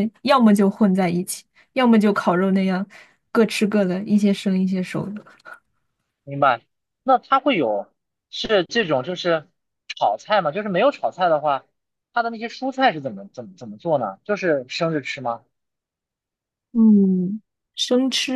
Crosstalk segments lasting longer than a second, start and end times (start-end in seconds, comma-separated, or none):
none